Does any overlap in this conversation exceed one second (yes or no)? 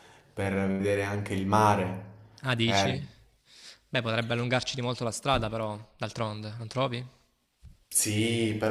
no